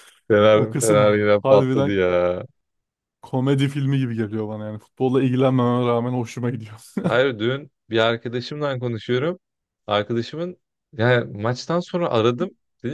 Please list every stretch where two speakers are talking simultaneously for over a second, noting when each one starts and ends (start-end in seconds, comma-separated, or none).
0.5-2.0